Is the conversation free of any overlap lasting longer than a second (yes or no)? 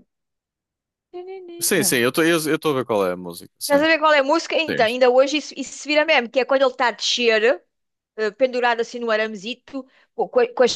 yes